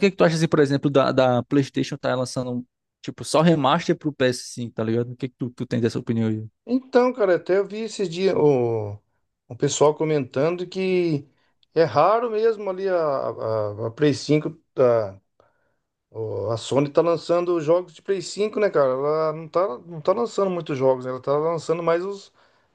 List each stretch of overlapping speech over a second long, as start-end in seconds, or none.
none